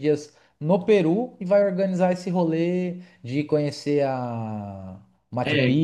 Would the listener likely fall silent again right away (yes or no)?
no